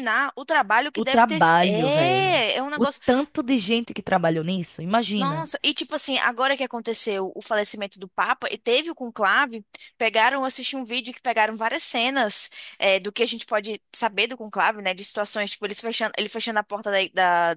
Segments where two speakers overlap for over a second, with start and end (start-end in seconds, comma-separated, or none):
0.9-3.0